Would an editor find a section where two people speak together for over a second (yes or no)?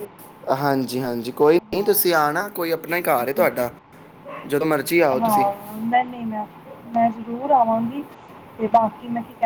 yes